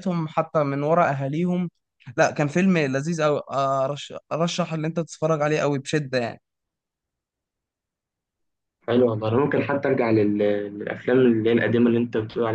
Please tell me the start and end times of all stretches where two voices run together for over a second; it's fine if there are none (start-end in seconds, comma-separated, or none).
none